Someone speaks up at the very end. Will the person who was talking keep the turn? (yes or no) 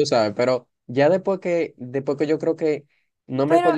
yes